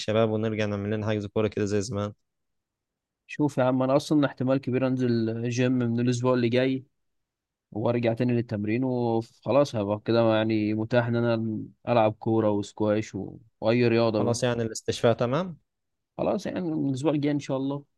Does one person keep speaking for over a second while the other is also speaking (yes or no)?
no